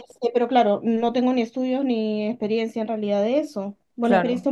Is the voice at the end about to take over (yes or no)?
no